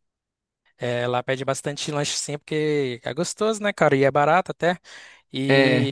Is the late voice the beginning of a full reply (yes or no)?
no